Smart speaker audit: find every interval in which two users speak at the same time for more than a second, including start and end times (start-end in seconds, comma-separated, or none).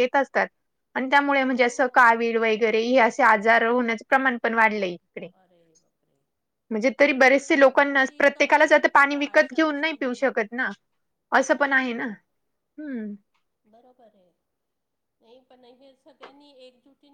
8.3-10.4